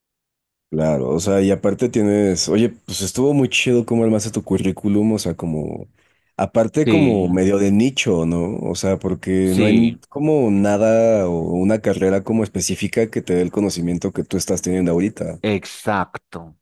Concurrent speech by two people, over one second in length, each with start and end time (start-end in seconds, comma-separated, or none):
none